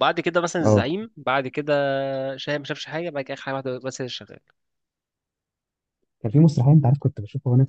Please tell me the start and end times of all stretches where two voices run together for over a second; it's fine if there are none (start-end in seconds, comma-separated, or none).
none